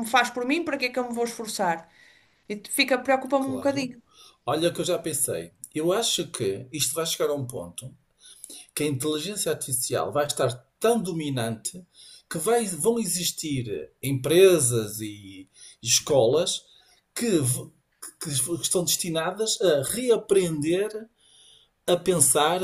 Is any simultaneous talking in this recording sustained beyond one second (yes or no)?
no